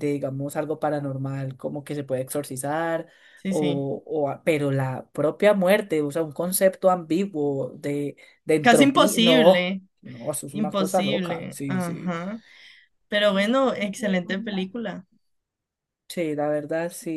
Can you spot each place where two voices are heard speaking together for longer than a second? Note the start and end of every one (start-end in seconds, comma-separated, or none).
8.6-9.8, 10.5-12.1